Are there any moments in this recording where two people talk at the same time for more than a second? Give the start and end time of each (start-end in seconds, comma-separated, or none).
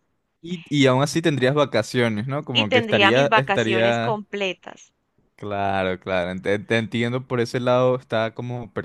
2.5-4.2